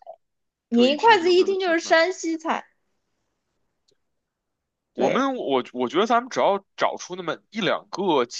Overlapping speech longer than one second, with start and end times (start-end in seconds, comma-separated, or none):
0.7-2.0